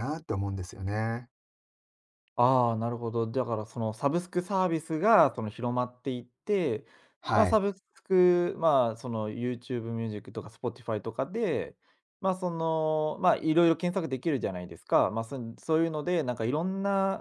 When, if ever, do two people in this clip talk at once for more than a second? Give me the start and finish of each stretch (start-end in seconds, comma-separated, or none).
none